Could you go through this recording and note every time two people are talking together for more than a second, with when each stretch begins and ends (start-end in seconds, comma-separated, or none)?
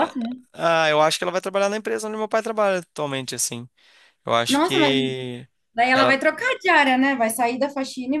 none